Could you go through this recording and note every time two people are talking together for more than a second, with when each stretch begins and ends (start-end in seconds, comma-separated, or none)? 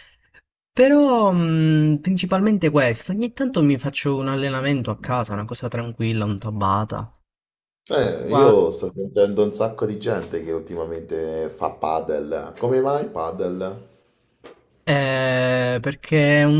none